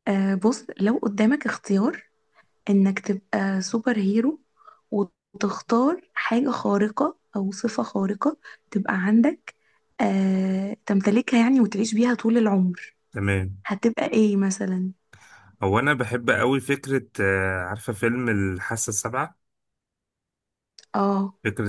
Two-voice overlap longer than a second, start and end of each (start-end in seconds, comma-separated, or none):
none